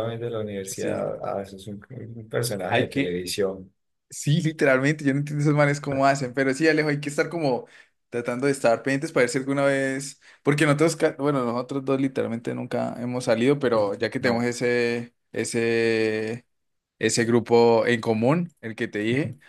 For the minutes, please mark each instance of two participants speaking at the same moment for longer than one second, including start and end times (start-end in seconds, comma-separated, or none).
none